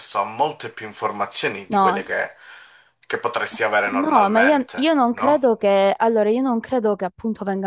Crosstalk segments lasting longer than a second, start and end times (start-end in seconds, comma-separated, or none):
3.5-5.5